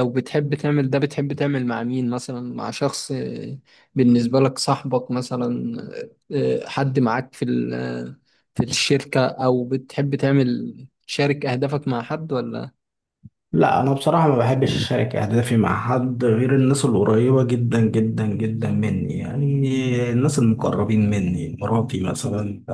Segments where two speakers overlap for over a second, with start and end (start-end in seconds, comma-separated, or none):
none